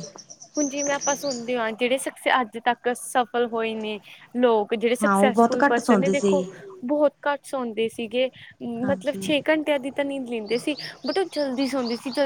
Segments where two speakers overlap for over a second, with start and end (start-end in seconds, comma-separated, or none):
5.0-6.4